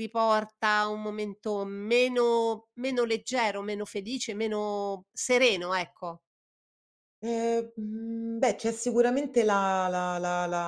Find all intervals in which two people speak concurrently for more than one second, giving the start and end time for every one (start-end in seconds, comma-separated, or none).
none